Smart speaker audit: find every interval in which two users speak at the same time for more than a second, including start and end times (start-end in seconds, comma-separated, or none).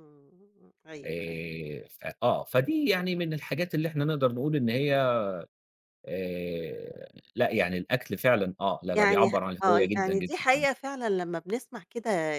8.9-10.7